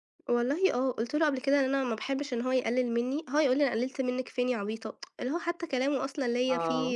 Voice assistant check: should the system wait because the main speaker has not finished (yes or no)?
yes